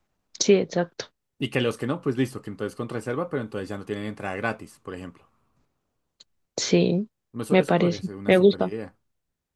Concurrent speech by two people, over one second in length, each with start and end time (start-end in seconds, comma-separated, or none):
7.5-8.7